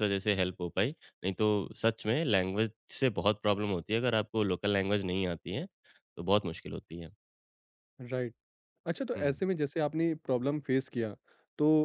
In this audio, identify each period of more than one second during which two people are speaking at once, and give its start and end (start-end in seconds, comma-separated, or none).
none